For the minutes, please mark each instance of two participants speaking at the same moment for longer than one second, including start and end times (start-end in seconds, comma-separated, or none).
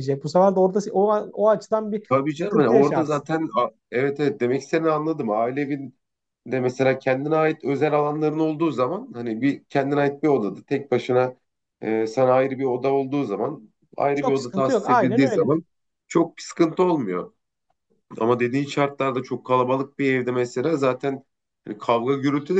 2.1-3.3, 14.1-15.5